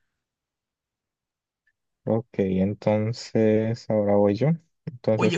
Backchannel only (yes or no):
no